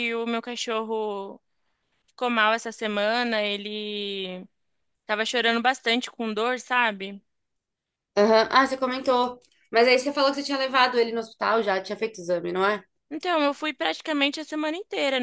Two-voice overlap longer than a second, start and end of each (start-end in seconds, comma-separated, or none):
none